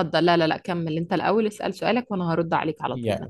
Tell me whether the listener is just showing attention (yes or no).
no